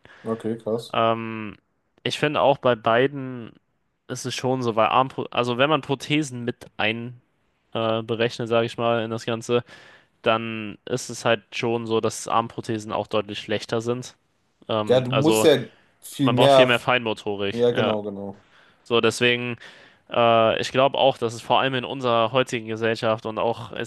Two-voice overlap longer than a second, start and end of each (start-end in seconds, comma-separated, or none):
none